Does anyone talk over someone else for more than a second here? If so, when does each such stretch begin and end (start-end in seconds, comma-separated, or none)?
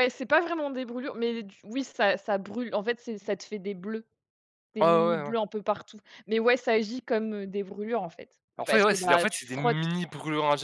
8.6-9.8